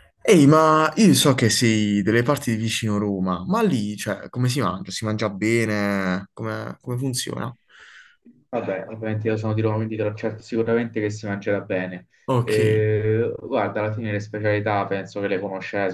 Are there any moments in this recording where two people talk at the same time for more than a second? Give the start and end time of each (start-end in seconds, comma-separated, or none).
none